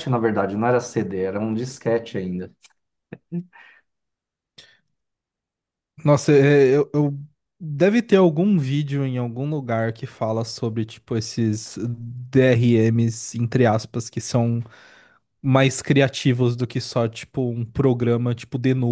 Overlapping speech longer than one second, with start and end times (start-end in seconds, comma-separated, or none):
none